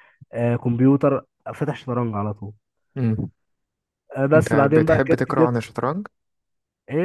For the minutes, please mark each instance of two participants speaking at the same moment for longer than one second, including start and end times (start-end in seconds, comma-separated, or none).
4.4-5.6